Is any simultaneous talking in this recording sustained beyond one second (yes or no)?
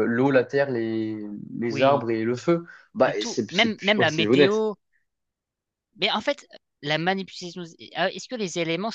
yes